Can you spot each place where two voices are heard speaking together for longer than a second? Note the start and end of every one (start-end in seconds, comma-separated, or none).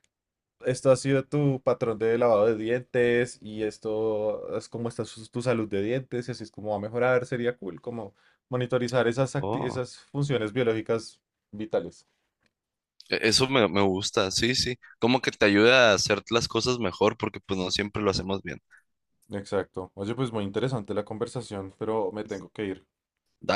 none